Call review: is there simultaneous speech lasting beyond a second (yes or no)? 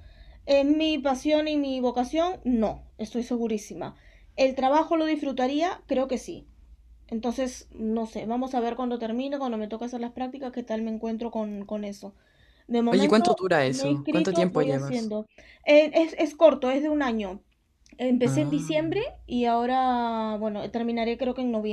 yes